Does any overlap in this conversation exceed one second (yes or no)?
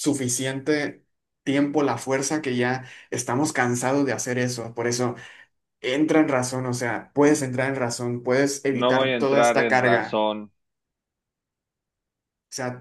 yes